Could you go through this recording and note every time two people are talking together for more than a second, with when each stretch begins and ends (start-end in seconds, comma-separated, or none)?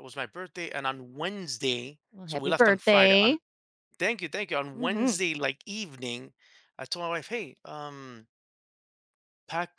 2.1-3.4